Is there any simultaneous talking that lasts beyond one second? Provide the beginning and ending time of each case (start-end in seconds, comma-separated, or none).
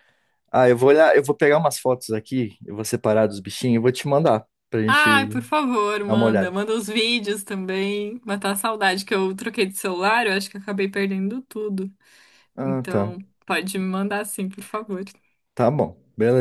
none